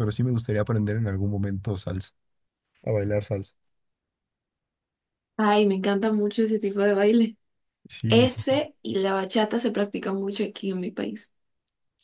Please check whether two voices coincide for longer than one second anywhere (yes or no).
no